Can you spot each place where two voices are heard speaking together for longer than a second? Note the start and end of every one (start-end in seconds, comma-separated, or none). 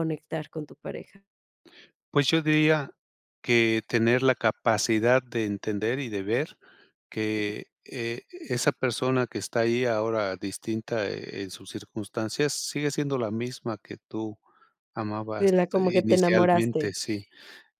15.4-16.9